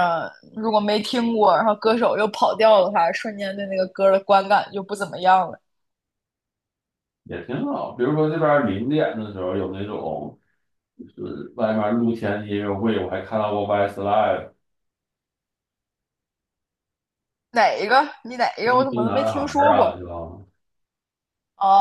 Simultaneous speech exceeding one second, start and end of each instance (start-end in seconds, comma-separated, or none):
18.6-20.0